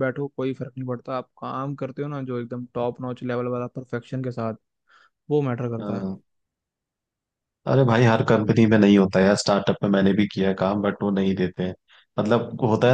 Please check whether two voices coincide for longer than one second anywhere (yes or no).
no